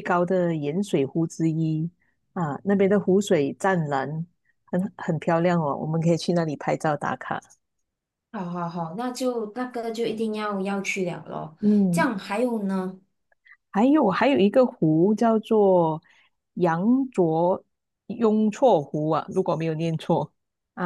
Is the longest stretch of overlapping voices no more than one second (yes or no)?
yes